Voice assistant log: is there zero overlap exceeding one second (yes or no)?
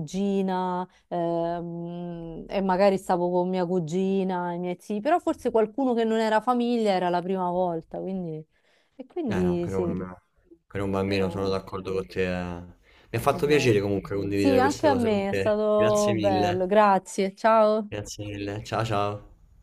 no